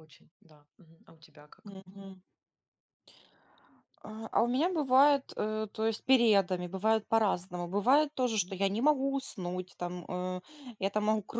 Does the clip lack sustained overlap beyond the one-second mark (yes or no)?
yes